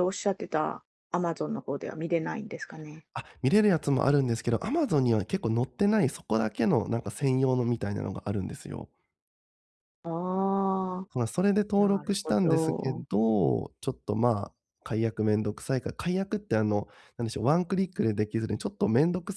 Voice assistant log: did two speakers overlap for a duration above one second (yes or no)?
yes